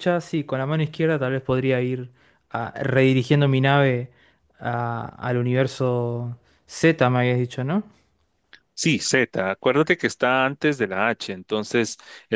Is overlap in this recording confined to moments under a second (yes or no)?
yes